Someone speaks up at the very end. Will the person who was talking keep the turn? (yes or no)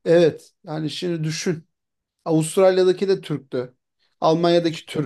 yes